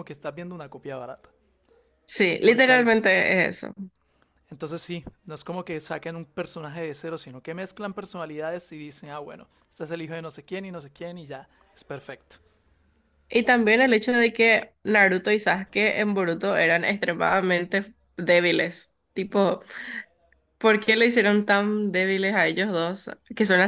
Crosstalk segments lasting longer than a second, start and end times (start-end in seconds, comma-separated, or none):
none